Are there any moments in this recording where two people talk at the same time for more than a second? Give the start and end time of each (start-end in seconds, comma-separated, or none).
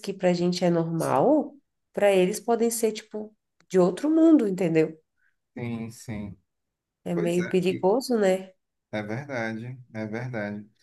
none